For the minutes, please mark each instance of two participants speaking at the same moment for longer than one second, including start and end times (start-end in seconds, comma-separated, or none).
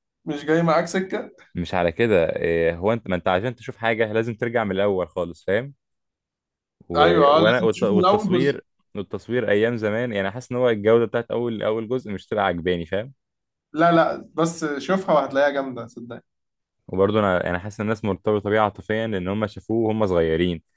7.4-8.6